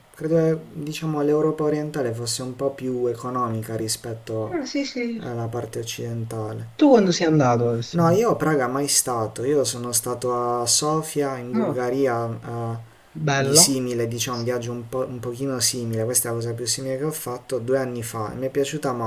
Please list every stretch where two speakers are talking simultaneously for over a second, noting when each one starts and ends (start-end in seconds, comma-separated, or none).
none